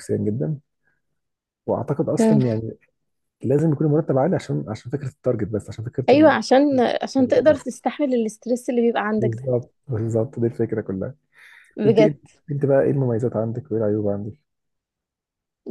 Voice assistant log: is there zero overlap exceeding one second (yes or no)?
yes